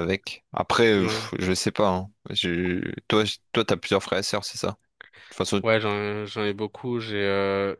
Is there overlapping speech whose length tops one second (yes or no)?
no